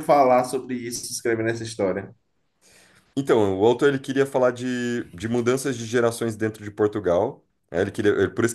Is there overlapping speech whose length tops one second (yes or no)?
no